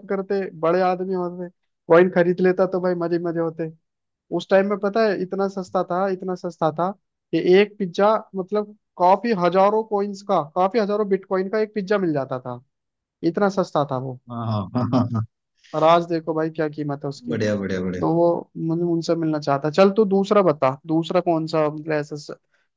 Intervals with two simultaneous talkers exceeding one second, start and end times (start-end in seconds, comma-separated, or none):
none